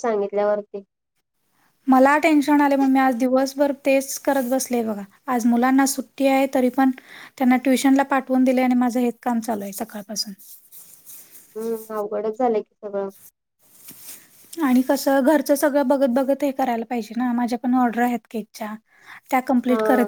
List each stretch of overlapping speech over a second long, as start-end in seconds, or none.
none